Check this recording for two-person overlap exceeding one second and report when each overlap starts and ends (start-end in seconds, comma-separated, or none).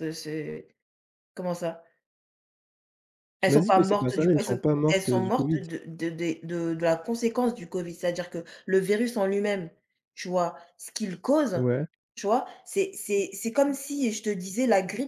3.4-5.6